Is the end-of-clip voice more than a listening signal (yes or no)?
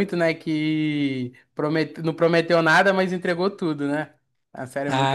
yes